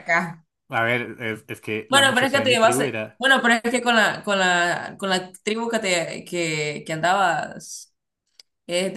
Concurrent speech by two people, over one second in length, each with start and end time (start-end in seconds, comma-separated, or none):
1.9-3.2